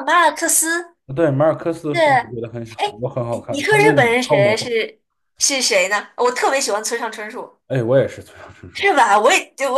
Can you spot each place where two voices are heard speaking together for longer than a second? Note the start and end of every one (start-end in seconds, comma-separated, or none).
3.5-4.7